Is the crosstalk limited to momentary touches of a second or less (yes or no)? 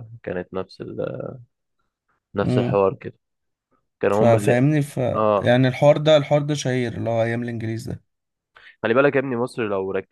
yes